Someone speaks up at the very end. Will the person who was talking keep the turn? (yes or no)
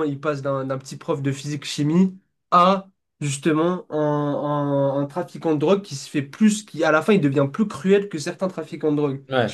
no